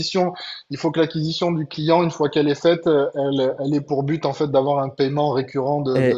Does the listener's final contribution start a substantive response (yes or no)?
yes